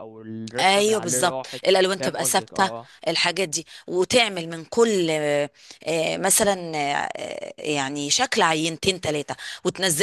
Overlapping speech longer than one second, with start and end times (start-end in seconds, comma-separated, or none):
0.6-2.7